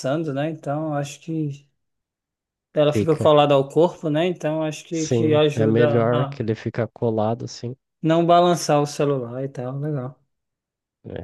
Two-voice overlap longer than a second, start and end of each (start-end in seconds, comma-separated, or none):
4.9-6.4